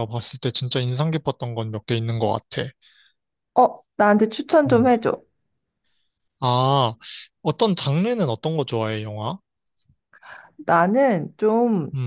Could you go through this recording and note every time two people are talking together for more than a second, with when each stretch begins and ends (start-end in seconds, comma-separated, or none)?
none